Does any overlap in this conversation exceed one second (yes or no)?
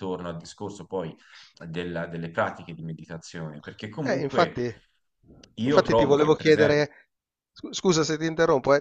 yes